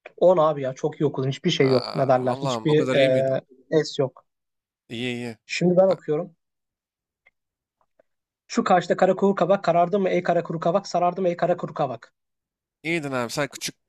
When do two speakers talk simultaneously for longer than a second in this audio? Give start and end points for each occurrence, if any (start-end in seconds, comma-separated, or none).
1.6-3.4